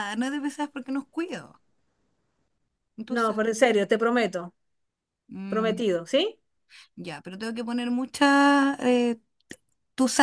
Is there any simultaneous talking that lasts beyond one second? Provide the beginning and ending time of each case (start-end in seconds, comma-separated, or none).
none